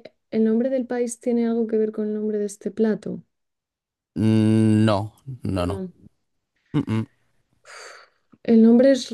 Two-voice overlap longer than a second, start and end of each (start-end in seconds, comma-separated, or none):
none